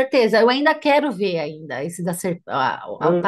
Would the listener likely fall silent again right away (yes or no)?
yes